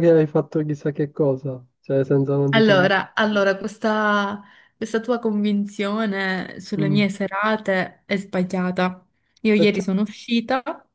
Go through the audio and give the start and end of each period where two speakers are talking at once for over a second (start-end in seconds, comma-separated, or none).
none